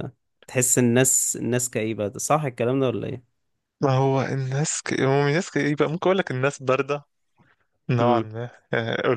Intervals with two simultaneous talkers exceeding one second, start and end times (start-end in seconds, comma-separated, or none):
none